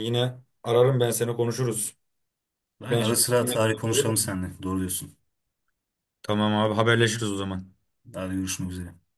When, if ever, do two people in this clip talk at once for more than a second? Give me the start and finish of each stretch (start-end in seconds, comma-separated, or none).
2.9-4.3